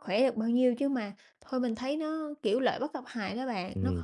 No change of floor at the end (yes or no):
no